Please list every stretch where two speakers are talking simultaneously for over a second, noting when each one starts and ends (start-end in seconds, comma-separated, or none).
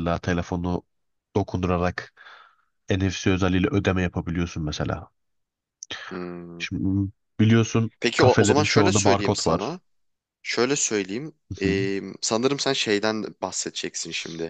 8.0-9.8